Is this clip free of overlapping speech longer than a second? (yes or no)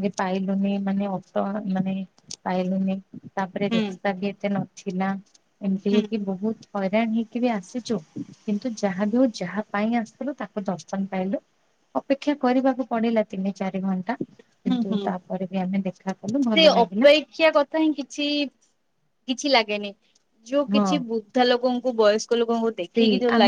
yes